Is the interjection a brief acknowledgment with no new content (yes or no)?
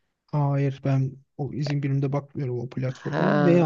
no